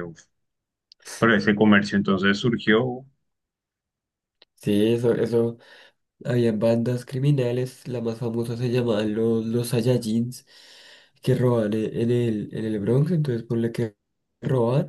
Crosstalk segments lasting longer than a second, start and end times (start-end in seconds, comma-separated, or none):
none